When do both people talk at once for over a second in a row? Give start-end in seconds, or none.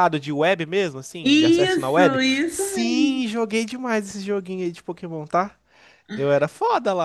1.2-3.2